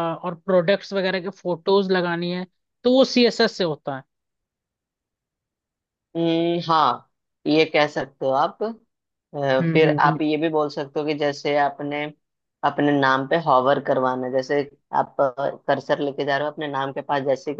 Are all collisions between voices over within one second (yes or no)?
yes